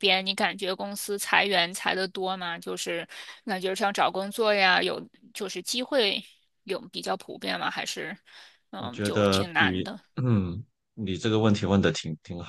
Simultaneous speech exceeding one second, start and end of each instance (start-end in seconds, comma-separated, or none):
8.8-10.0